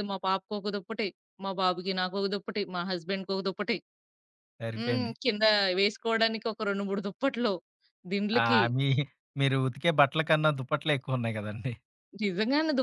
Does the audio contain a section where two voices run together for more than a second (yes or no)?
no